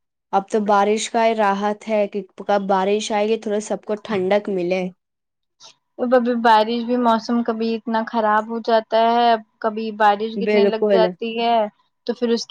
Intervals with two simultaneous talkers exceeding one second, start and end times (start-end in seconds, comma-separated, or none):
none